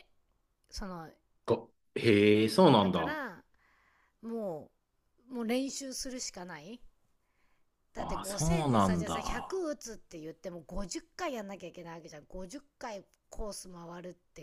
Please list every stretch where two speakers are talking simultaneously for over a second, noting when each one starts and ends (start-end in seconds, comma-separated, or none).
8.0-9.6